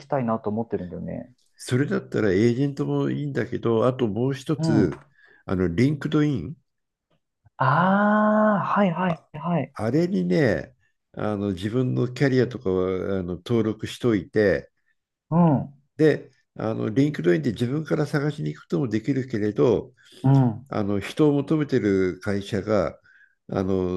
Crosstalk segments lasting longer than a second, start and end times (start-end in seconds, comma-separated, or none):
none